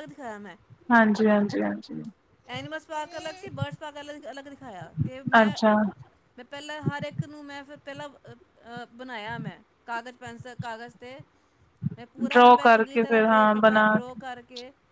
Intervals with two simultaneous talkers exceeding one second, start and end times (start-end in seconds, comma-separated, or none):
12.3-13.8